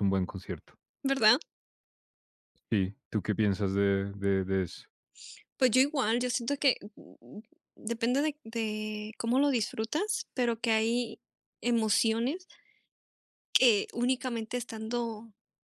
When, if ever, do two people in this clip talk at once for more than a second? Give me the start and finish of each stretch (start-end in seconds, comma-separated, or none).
none